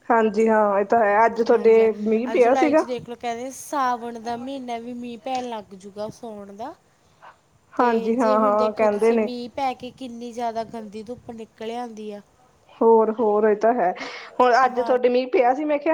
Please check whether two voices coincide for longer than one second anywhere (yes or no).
yes